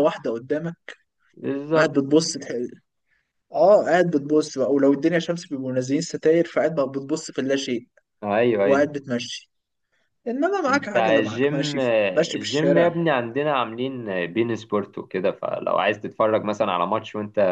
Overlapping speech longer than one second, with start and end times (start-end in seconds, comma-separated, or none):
10.7-12.9